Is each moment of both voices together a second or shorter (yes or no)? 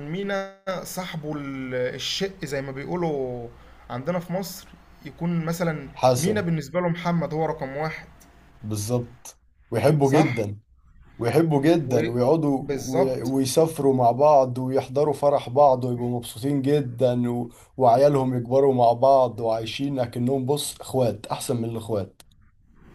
no